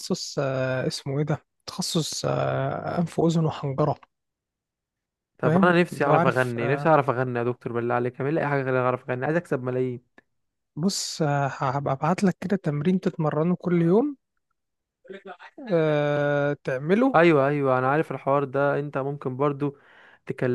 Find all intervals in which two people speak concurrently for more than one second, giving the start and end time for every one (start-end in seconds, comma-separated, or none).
5.4-6.9